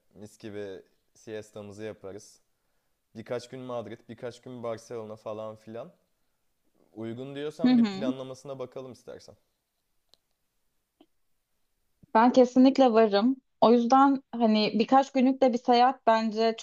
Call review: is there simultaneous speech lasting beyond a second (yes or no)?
no